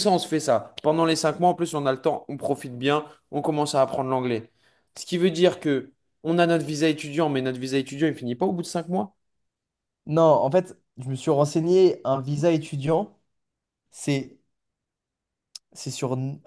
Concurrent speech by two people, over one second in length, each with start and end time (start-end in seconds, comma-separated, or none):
none